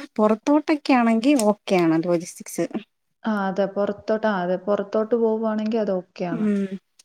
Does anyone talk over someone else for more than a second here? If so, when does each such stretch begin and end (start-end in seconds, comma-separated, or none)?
none